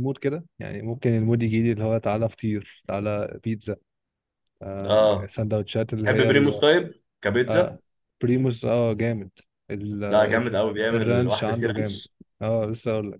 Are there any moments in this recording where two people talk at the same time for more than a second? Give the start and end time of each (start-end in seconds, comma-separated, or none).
10.1-12.0